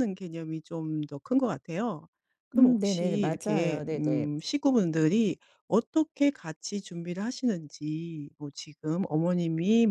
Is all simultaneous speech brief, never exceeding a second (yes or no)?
no